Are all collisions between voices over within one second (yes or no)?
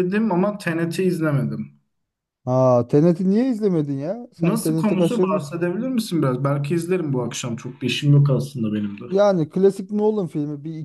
no